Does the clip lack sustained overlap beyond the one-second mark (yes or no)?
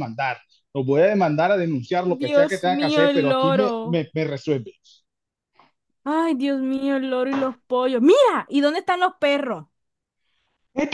no